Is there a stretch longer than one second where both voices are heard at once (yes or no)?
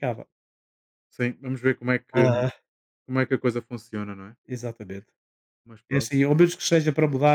no